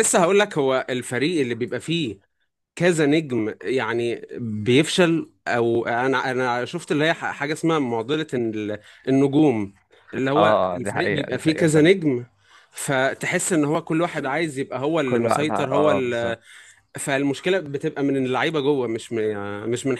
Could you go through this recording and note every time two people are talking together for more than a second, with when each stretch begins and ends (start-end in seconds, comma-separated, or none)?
10.4-11.9, 15.1-16.4